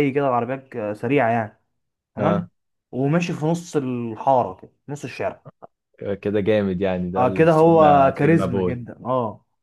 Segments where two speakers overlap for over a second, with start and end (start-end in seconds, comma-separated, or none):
7.2-8.8